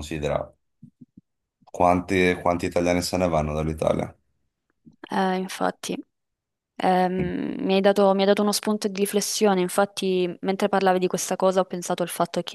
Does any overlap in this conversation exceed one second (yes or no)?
no